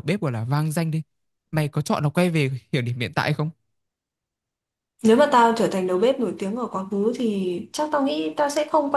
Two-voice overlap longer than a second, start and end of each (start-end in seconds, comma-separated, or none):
none